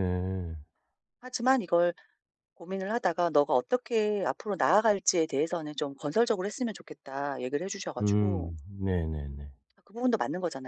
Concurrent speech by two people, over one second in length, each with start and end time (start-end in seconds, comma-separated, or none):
none